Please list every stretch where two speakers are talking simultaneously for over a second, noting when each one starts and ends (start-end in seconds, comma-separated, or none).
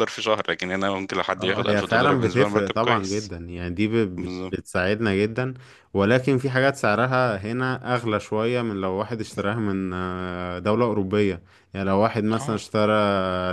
1.3-3.3